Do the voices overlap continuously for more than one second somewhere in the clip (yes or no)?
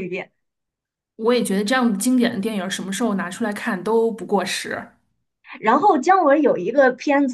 no